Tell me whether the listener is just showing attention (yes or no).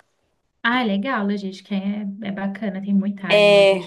no